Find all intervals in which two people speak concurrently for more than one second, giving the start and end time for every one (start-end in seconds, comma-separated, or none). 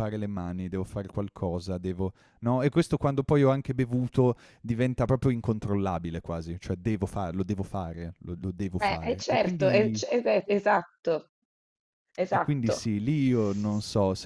8.8-10.0